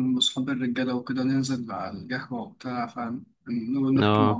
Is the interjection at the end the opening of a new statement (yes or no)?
no